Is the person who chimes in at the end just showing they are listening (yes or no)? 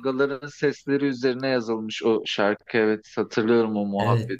no